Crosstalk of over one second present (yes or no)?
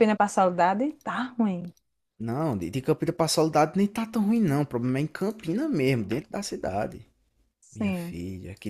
no